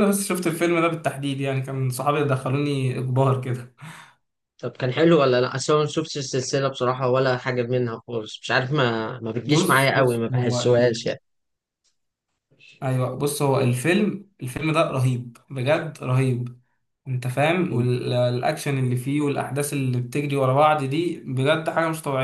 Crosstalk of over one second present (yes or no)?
yes